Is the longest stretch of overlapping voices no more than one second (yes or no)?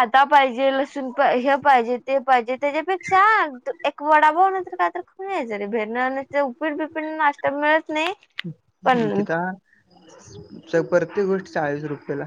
yes